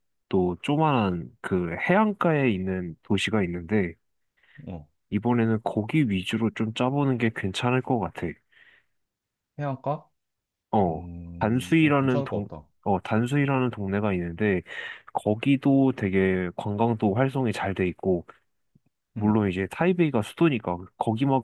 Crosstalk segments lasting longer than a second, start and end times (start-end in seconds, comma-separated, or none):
10.9-12.5